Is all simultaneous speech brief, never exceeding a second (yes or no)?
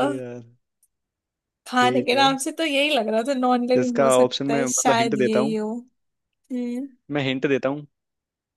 no